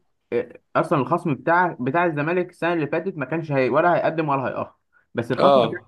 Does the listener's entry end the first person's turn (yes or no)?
no